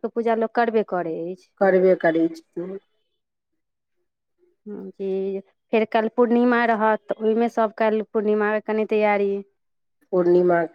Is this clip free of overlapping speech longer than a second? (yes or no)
yes